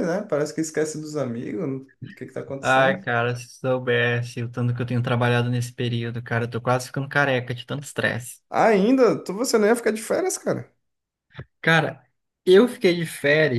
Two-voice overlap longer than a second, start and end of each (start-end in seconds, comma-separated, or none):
none